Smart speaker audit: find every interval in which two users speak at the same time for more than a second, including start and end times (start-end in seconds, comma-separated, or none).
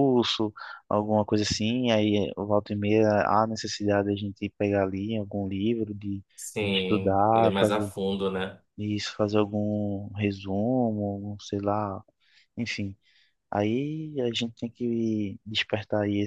6.6-7.9